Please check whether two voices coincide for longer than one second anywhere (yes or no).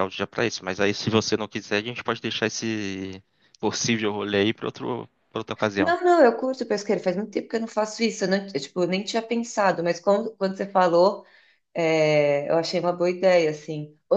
no